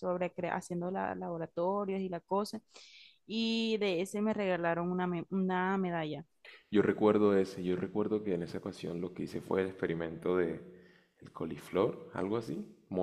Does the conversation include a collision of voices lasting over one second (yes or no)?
no